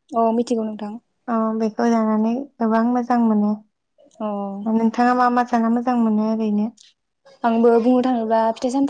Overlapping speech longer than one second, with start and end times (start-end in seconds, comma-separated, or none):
none